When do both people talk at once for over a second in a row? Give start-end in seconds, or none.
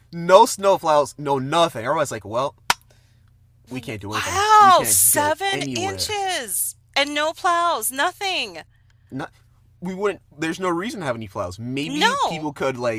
4.1-6.2